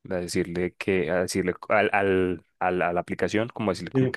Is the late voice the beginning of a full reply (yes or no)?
no